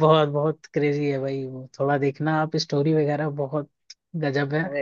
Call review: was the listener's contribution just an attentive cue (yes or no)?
yes